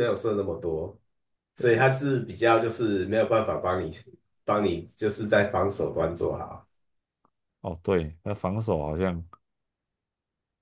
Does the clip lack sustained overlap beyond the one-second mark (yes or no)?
yes